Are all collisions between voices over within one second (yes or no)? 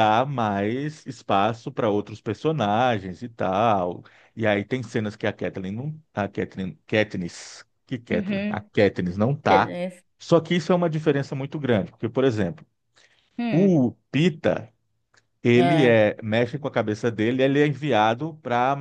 yes